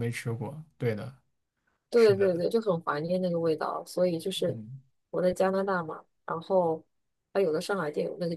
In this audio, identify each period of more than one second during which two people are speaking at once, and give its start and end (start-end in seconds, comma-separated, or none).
none